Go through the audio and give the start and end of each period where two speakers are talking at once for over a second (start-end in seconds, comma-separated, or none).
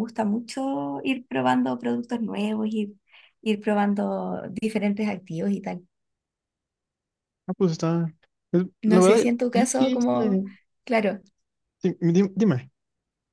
8.8-10.4